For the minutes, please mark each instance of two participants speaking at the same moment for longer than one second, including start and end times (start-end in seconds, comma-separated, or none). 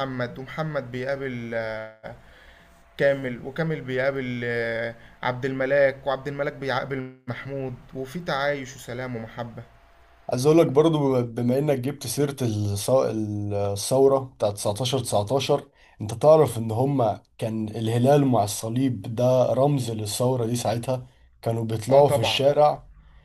none